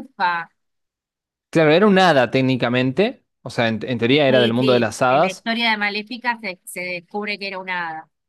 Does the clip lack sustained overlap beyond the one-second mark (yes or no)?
no